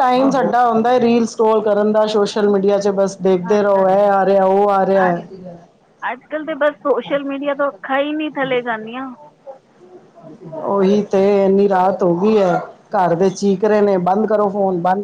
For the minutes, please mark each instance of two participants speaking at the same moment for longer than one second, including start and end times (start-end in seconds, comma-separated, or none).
none